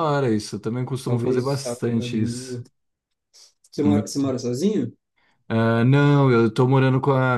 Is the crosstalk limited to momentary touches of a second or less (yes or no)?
no